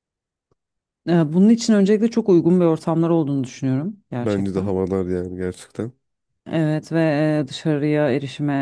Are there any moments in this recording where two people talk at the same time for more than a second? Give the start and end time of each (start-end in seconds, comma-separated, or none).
none